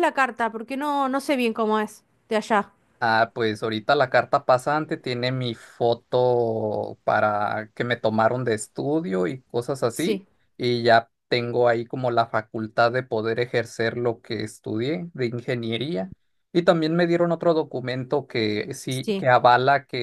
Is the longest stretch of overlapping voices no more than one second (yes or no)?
yes